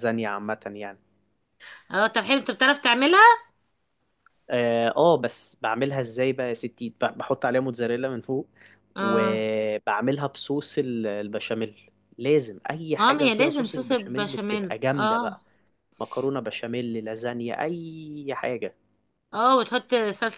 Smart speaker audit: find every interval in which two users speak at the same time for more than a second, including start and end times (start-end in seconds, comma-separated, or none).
13.0-15.4